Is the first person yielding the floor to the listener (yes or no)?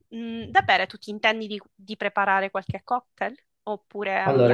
yes